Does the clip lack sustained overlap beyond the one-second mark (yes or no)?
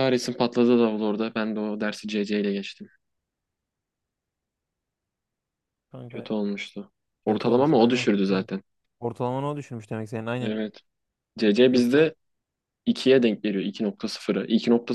no